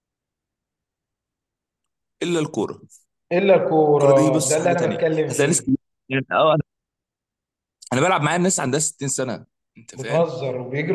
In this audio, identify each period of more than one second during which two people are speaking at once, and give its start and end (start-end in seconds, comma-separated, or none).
3.9-5.7